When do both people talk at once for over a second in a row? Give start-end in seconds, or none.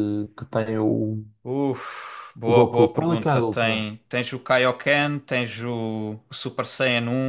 2.4-3.9